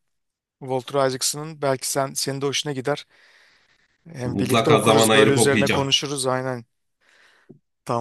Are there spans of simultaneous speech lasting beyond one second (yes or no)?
yes